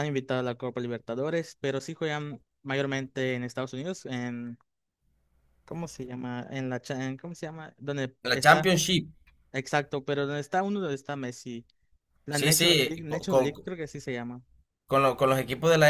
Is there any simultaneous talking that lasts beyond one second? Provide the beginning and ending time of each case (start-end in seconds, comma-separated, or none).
12.3-13.5